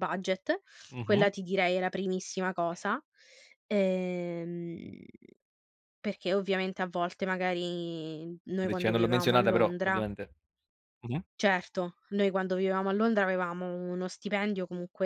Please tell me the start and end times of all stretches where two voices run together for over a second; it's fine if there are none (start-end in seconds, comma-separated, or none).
8.7-10.1